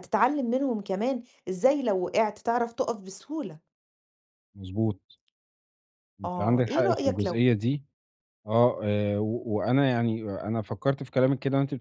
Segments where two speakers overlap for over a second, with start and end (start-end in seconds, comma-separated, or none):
6.2-7.5